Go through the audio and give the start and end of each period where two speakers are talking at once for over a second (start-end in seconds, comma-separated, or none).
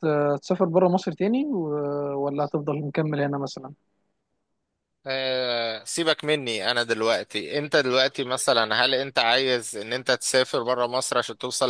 none